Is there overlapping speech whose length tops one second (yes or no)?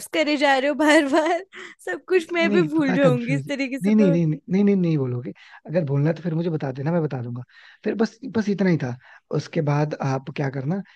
yes